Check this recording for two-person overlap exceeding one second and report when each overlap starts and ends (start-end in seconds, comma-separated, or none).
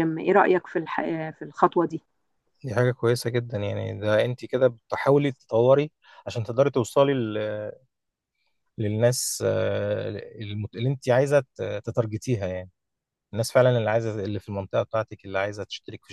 none